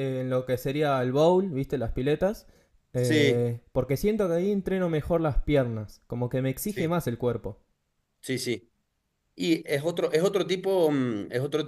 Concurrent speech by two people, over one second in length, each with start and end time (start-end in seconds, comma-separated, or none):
none